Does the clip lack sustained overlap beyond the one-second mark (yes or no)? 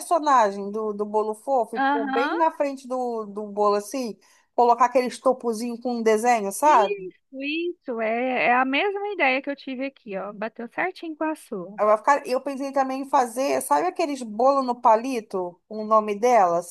yes